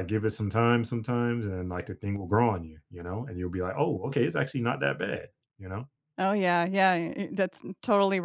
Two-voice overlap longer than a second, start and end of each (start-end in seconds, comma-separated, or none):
none